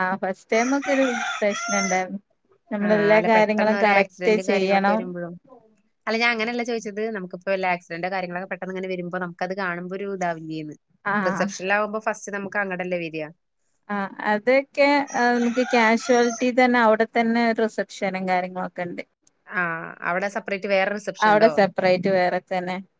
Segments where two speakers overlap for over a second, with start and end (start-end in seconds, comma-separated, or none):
2.9-5.0